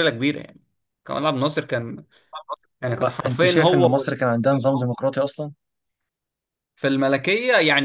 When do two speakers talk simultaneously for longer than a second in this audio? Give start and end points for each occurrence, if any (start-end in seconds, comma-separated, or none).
2.9-4.2